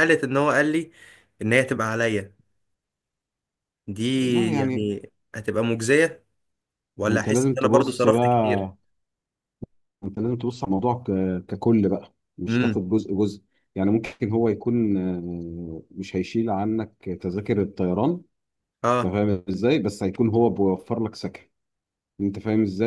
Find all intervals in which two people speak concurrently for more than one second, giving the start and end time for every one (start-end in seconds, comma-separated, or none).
7.0-8.7